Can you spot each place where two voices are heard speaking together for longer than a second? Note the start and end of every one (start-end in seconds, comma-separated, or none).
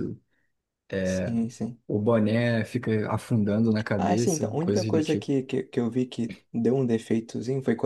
4.0-5.3